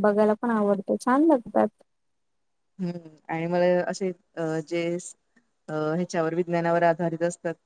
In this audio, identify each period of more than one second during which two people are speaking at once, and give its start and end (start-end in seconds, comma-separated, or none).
none